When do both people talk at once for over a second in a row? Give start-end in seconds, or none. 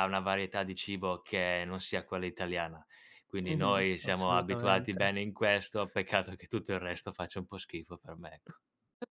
3.4-5.1